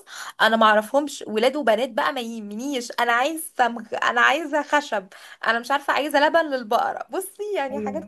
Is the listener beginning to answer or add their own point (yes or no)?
yes